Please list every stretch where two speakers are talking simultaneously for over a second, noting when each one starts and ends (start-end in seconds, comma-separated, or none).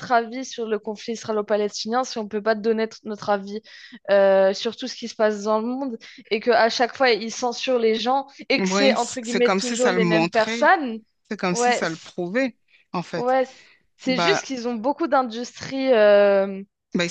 8.6-10.7